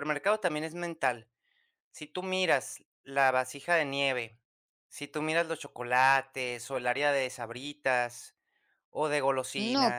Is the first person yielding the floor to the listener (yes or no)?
yes